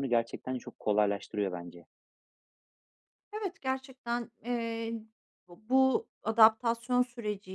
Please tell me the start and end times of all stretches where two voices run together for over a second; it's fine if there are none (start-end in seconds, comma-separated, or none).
none